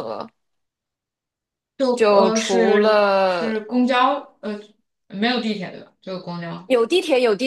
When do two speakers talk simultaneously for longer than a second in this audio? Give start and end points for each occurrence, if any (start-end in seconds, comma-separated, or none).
1.9-3.5